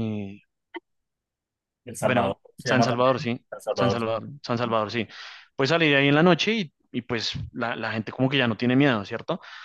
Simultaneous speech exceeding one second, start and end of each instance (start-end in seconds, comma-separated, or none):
2.0-4.0